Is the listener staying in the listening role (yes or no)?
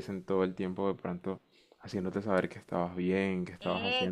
no